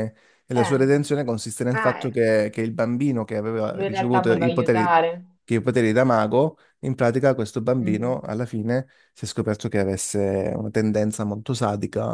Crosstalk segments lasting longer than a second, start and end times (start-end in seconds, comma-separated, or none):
3.7-5.0